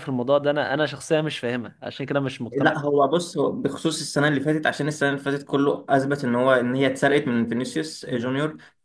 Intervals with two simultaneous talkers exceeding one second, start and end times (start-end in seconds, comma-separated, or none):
none